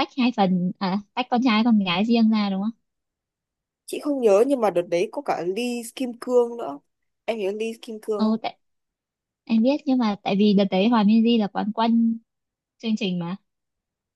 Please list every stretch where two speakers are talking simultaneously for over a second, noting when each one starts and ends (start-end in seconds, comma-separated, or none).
none